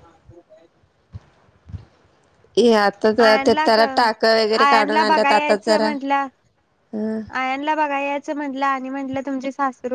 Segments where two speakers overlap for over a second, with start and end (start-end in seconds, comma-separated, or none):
3.2-5.9